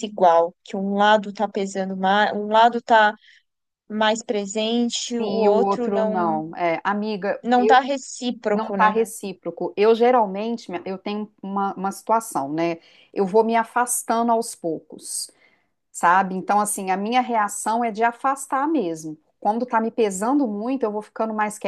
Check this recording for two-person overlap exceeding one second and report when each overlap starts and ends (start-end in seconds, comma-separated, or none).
5.2-6.4